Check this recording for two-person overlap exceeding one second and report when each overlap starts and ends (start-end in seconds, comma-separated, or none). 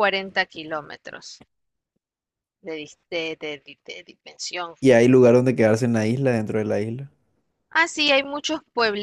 none